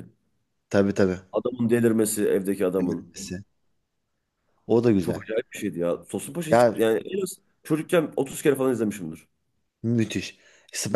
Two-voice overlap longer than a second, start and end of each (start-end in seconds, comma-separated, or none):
none